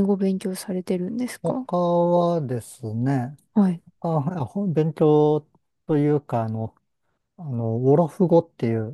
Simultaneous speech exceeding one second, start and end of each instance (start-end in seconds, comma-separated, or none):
none